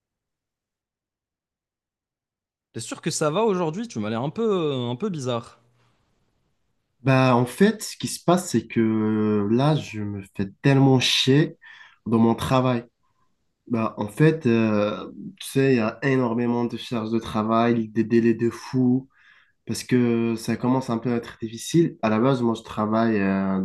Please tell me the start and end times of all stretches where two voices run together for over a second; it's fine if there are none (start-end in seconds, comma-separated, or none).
none